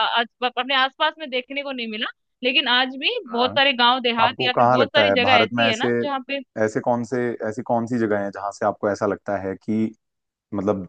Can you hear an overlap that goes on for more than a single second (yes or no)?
yes